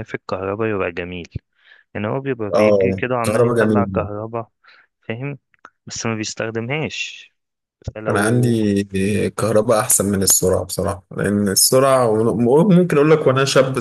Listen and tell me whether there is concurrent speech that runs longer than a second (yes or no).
yes